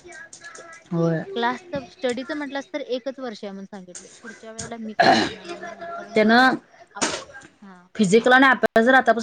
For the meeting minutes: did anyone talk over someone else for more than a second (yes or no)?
no